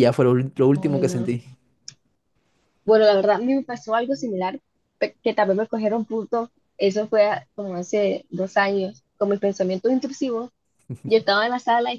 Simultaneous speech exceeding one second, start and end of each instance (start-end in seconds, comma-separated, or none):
none